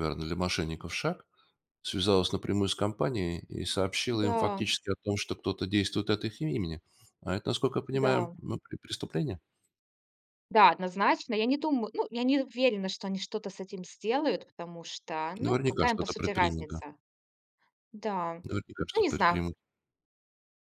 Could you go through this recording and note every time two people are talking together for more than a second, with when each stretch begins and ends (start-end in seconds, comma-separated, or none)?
15.4-16.8